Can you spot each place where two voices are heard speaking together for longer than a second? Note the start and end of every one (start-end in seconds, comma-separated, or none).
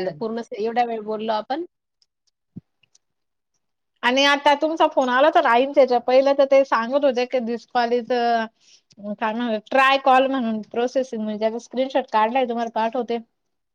none